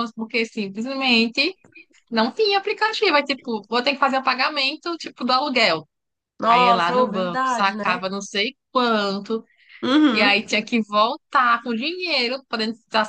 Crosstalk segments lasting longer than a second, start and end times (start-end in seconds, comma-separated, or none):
6.5-8.0